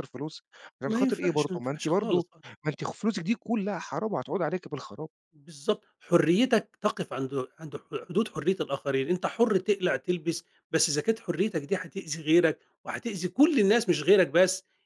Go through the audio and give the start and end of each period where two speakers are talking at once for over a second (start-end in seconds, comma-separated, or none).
0.9-2.2